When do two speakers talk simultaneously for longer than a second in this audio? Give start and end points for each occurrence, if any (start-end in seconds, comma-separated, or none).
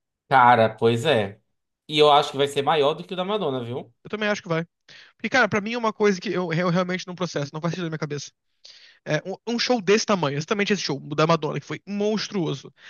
none